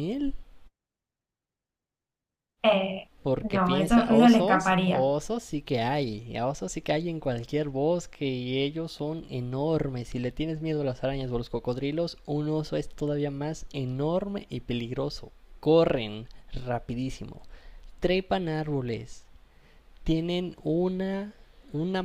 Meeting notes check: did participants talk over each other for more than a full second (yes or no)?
yes